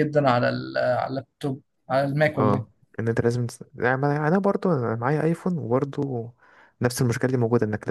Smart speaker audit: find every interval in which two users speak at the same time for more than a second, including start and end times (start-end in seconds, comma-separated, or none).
none